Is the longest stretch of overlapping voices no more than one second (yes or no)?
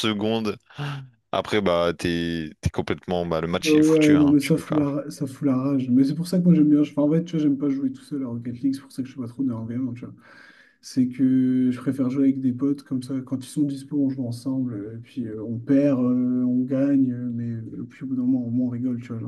no